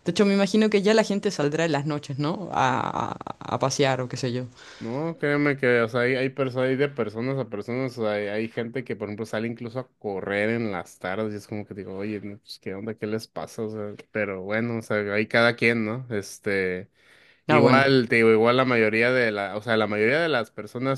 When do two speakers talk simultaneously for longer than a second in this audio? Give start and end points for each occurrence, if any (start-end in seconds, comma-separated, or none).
none